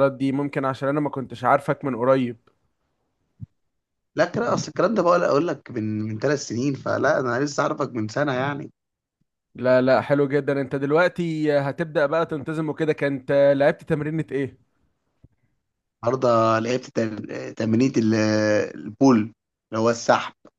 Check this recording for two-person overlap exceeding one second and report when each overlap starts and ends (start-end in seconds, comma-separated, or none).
none